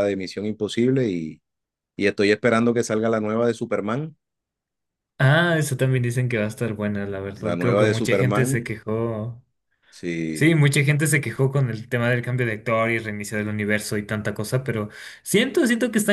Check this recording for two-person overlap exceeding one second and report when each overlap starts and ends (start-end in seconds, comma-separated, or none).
7.4-8.7